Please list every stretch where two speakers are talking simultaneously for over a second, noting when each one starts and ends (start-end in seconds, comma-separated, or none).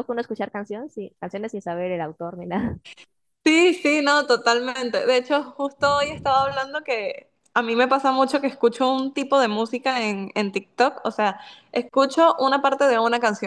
none